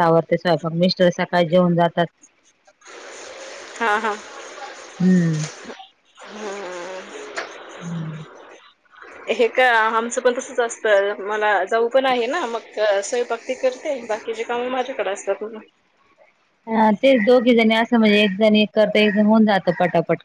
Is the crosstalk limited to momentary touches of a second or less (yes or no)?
yes